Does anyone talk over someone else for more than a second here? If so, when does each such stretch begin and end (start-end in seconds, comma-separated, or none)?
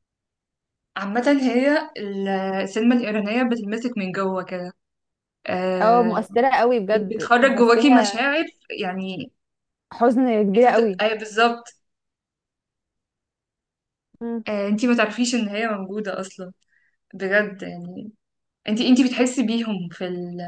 6.9-8.3